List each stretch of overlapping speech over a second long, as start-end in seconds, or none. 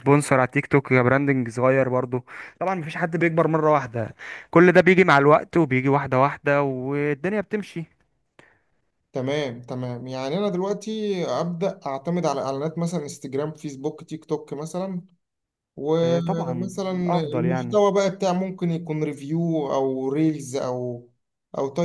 16.0-17.8